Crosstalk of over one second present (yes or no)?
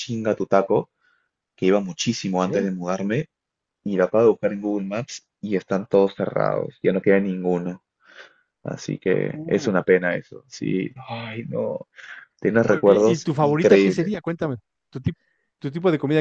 yes